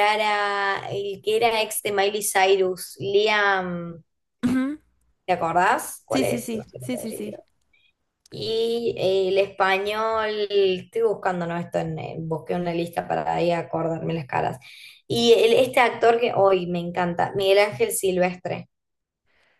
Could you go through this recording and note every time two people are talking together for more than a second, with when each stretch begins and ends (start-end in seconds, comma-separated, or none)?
6.1-7.4